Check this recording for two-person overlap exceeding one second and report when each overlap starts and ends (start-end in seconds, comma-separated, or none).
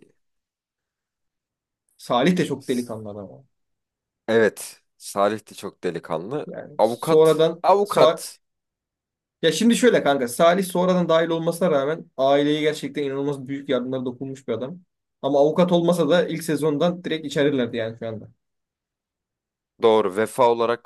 6.5-8.2